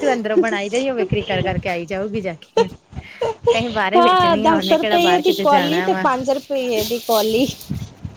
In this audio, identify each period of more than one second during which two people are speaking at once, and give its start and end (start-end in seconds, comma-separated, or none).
4.0-6.0